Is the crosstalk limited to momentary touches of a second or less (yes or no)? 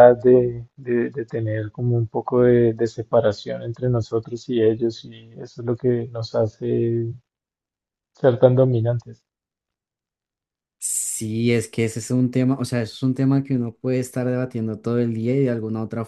yes